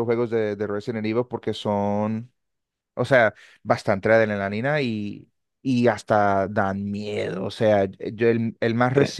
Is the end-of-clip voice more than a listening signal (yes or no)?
no